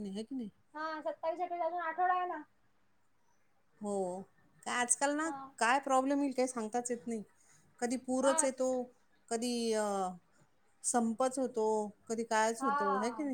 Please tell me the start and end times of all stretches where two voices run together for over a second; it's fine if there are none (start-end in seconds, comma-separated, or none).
none